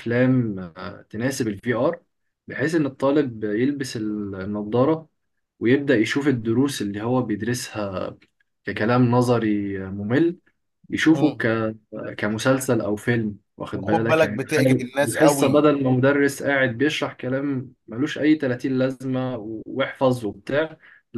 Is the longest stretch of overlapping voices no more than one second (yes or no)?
no